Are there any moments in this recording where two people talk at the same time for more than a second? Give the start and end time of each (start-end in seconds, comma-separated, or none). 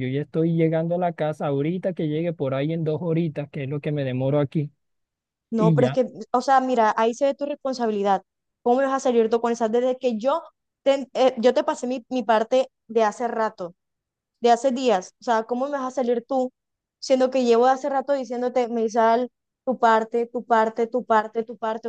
none